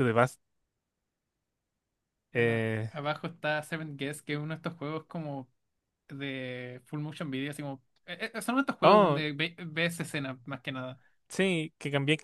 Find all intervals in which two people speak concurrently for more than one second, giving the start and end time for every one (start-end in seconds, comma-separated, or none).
none